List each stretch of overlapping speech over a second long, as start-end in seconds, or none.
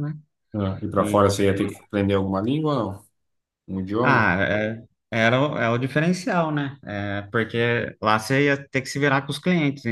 none